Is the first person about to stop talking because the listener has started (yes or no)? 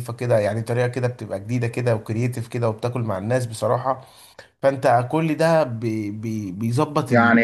yes